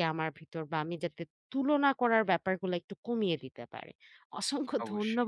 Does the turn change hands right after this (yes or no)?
no